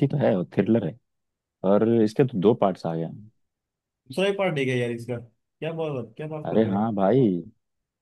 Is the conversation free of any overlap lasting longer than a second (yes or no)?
yes